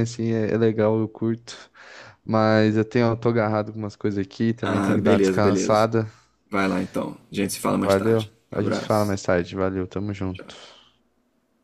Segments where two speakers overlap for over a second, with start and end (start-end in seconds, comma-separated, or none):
4.6-5.9, 7.7-9.2